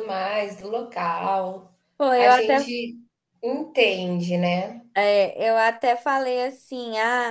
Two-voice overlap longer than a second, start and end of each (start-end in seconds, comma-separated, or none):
none